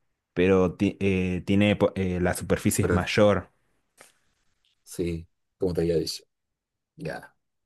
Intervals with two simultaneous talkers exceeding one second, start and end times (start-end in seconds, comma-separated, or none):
none